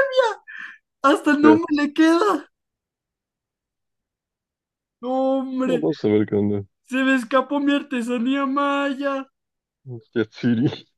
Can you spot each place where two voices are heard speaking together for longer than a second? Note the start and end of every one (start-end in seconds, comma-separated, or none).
none